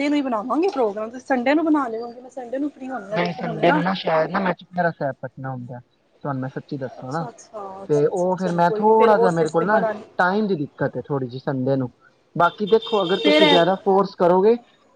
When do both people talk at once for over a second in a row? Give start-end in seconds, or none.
8.1-9.7